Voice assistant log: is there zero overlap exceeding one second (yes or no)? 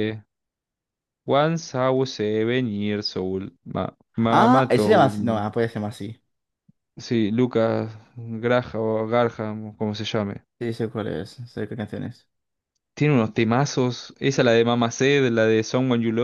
no